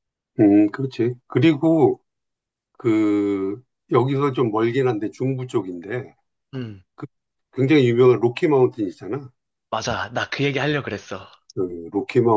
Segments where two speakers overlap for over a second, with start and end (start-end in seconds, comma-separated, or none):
none